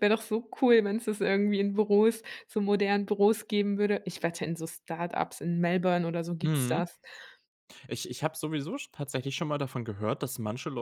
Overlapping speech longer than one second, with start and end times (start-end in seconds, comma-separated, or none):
none